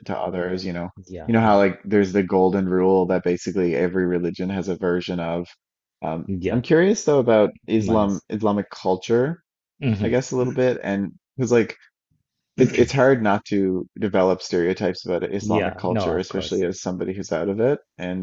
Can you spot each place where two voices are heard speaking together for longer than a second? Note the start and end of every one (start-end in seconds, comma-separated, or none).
15.4-16.6